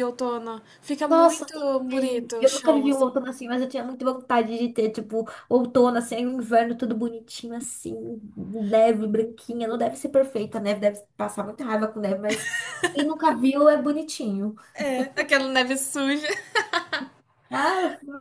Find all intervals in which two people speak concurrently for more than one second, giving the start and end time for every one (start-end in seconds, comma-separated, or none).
1.0-3.2